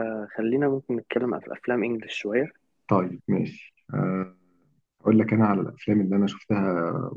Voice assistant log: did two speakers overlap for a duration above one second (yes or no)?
no